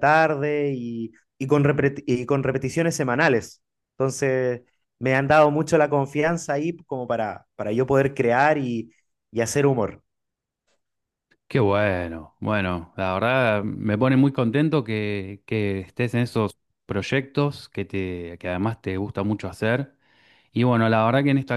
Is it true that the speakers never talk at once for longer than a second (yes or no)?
yes